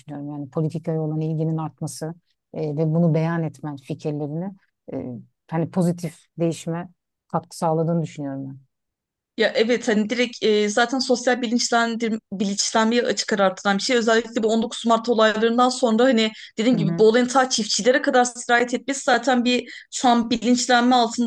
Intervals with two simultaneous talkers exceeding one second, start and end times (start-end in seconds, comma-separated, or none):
none